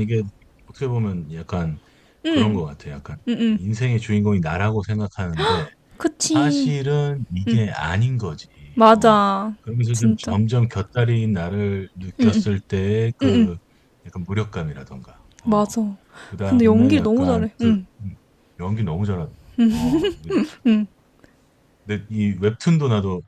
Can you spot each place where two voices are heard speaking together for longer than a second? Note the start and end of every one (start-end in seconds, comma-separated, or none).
16.4-17.9